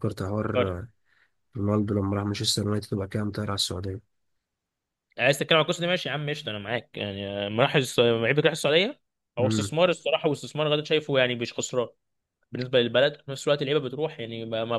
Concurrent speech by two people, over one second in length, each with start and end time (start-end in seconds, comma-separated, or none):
none